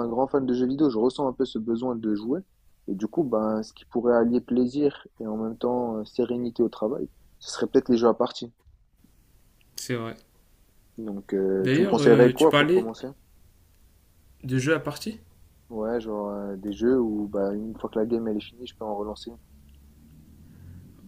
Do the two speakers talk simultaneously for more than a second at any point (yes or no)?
yes